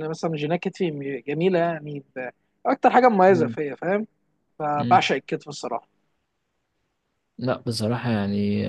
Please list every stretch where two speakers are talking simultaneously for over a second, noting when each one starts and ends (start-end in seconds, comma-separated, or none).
none